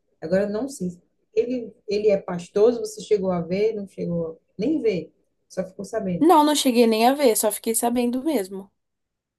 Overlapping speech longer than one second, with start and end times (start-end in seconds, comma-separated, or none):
none